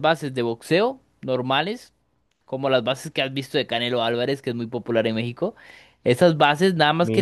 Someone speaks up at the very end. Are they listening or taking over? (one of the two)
listening